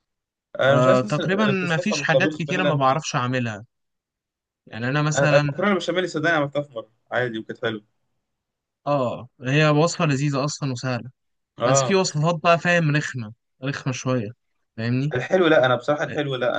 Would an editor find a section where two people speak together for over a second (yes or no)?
yes